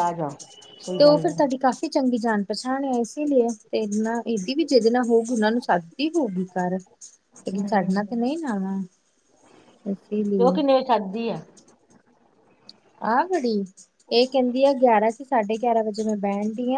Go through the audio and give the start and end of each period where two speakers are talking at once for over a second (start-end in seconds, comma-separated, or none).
none